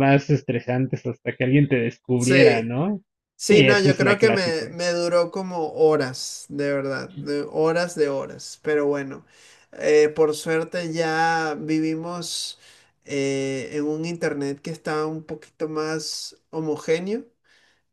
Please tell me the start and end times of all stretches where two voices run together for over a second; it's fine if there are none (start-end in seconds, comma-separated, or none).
3.5-4.8